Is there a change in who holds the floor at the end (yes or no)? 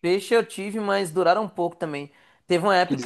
no